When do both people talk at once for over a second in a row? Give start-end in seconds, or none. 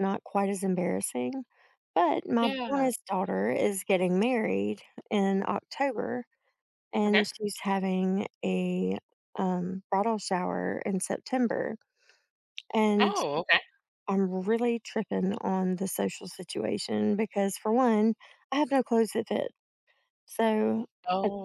none